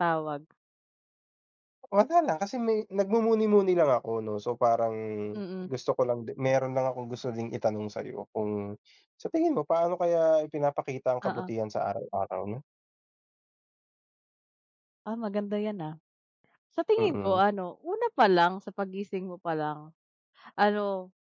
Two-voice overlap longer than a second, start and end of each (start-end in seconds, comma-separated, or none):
none